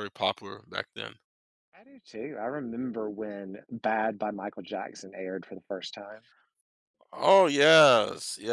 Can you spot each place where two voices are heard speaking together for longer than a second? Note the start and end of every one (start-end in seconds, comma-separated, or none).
none